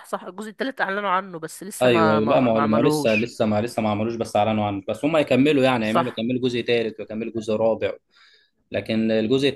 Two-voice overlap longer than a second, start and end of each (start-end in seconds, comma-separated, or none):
1.8-3.3